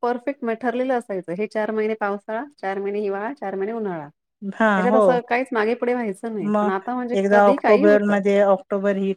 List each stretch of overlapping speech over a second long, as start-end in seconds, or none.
6.5-8.2